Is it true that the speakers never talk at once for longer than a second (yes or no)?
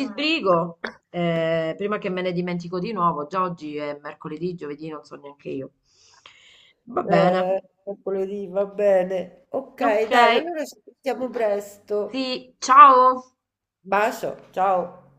yes